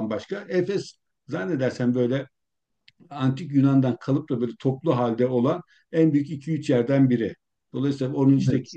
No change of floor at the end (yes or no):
yes